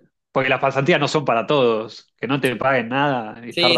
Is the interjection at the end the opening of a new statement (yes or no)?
yes